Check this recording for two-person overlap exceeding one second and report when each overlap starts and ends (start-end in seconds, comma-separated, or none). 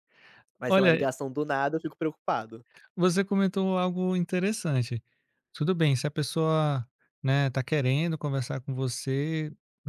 none